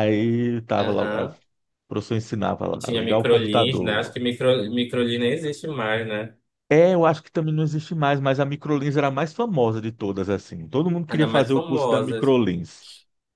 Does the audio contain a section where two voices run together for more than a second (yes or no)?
yes